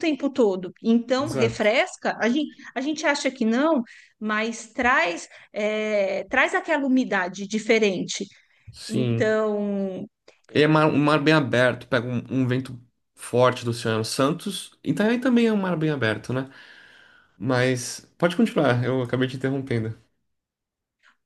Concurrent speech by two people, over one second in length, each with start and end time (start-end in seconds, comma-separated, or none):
none